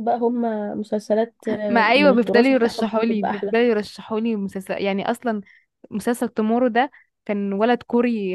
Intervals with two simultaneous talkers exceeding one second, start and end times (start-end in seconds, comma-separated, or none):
1.7-3.5